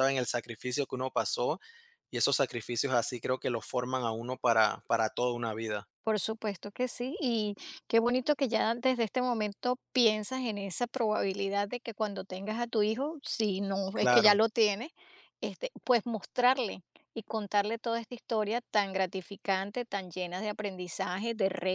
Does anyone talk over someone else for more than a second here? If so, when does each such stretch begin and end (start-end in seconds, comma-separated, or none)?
none